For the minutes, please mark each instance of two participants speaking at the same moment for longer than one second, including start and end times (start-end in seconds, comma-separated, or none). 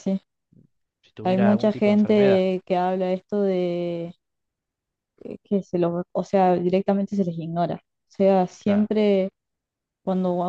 1.2-2.4